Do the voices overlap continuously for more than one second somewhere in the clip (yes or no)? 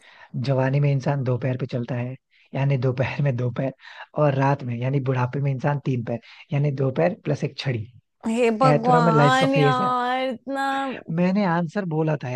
yes